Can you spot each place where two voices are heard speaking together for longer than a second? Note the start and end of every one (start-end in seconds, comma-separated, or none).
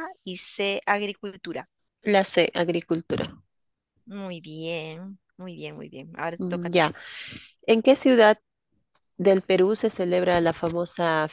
none